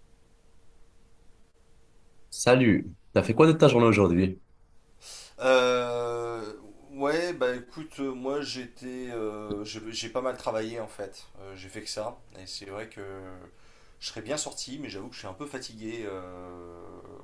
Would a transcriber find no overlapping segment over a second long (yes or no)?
yes